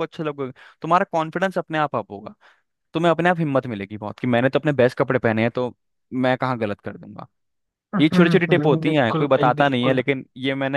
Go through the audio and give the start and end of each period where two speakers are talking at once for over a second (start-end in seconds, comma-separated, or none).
8.0-10.0